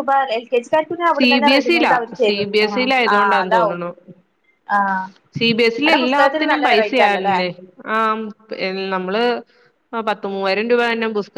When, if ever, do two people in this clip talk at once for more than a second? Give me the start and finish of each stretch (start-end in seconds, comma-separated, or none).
1.2-3.8, 5.8-7.4